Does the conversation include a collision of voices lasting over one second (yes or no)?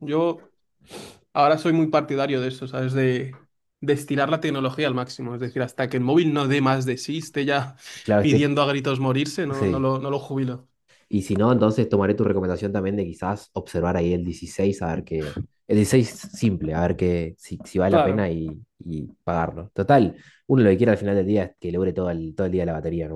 no